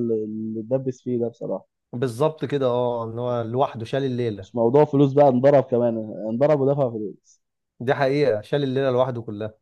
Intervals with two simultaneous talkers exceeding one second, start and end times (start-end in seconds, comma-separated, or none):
none